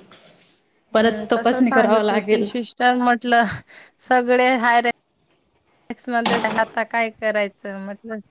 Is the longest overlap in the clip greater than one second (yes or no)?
yes